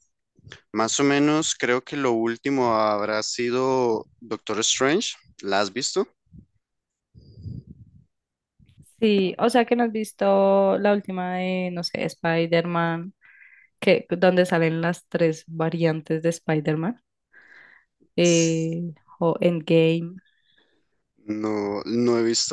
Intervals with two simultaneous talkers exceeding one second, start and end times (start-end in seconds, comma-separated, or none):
none